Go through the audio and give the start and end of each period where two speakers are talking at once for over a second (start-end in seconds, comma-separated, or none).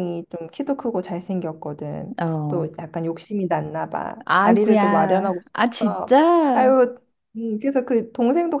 4.2-6.8